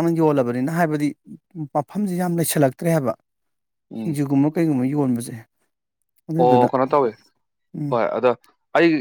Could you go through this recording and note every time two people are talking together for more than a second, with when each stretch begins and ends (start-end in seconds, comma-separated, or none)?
none